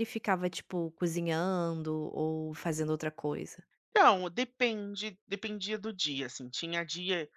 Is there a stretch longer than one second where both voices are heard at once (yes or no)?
no